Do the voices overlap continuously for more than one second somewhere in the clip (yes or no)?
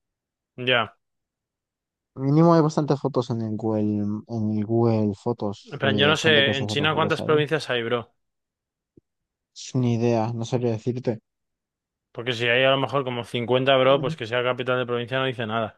yes